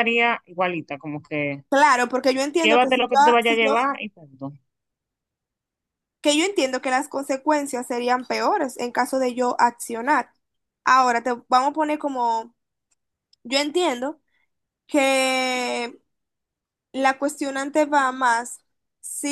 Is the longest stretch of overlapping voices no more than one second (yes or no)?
no